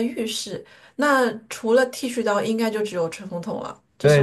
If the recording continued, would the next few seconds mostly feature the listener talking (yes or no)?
yes